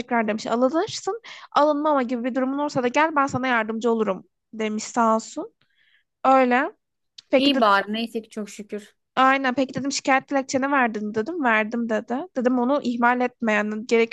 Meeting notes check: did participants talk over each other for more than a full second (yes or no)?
no